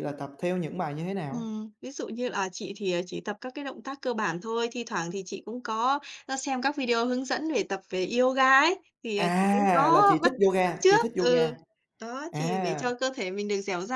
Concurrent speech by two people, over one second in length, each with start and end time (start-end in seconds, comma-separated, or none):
9.2-11.5